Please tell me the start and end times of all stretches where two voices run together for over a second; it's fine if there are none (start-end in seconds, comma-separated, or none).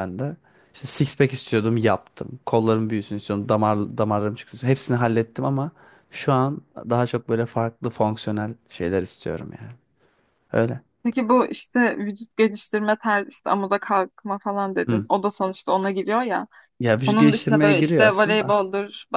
17.1-18.6